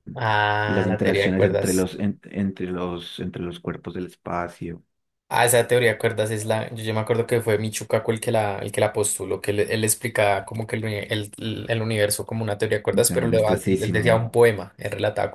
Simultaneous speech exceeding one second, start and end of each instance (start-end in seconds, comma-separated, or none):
0.7-1.9, 12.9-14.2